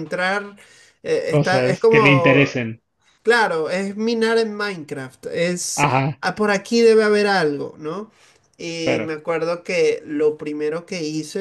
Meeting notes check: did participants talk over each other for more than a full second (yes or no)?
yes